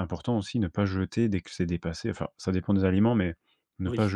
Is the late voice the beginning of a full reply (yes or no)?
no